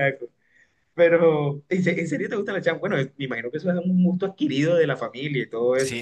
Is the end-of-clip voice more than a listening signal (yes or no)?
yes